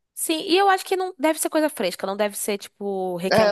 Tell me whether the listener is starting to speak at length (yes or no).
yes